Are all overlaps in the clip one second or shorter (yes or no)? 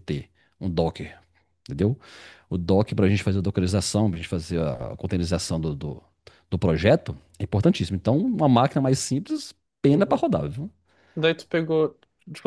yes